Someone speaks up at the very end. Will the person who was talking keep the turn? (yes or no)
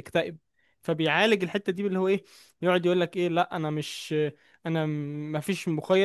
yes